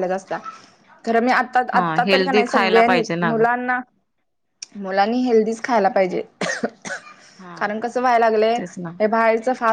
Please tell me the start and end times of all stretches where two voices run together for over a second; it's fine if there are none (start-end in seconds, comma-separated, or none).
1.8-3.5